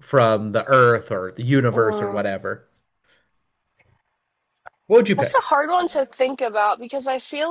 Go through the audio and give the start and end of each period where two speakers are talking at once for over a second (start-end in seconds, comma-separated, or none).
none